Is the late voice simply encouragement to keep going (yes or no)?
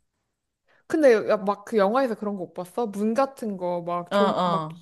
yes